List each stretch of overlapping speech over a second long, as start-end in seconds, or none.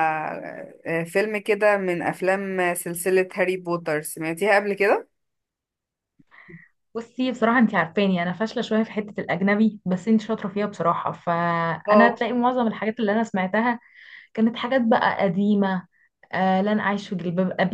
none